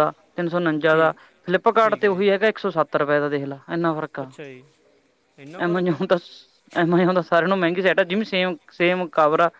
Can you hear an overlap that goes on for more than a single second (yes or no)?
no